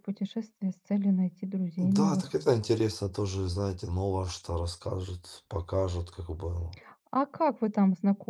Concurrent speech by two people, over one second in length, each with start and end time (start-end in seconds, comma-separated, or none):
none